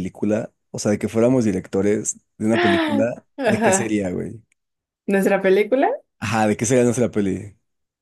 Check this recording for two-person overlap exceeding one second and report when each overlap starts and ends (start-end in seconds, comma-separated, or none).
2.5-4.0